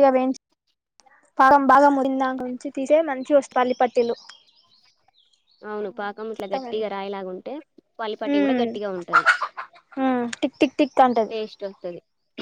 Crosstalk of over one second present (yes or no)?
no